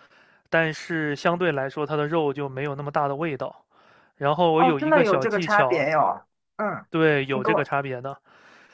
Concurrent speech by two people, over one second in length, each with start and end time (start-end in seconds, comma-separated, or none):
4.6-5.8